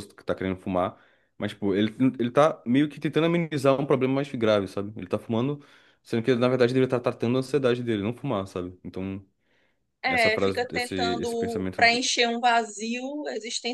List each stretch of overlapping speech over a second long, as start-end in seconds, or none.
10.1-12.0